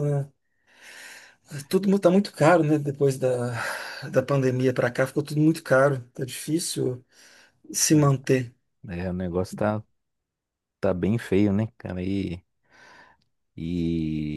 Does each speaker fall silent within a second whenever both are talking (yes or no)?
yes